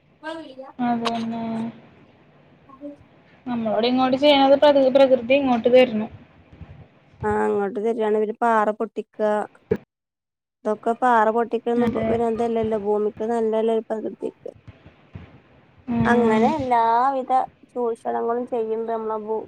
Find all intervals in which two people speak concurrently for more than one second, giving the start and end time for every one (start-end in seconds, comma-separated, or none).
none